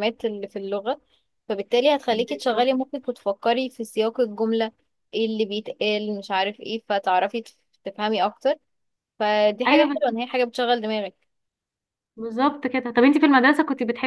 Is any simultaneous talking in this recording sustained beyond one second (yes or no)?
no